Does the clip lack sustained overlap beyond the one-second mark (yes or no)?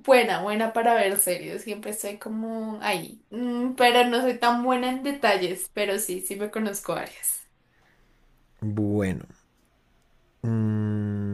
yes